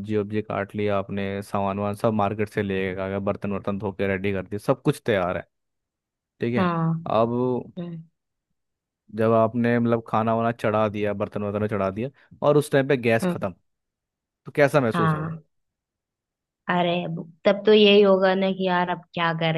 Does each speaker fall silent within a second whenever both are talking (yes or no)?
yes